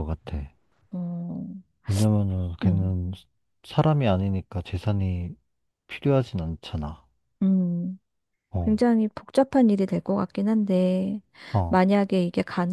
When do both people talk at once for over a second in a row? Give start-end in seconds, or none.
none